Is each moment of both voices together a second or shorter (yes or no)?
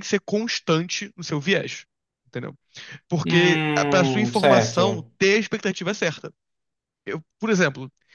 no